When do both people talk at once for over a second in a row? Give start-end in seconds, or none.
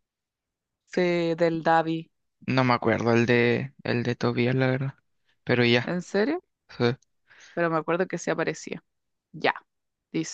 none